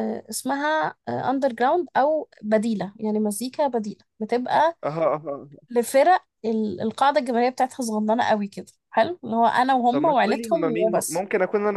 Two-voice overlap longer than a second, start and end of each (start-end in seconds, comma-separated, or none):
9.9-11.2